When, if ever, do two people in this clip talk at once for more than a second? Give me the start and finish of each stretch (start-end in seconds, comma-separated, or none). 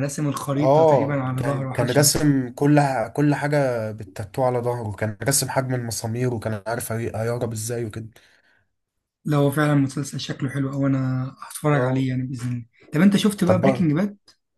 0.6-2.2